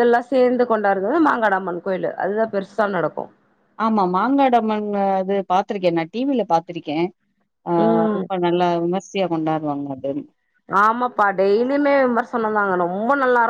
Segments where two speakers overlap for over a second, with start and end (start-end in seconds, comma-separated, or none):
none